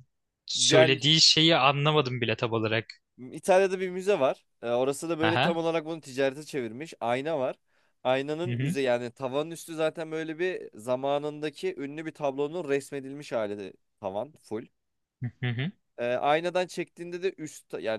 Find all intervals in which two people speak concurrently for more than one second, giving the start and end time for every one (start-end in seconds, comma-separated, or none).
none